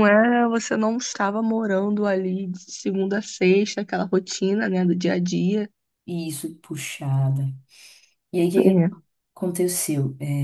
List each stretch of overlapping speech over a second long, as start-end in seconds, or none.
none